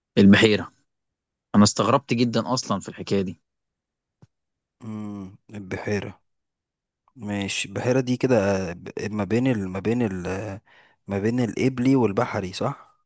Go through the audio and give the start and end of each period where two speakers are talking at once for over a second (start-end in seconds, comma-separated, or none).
none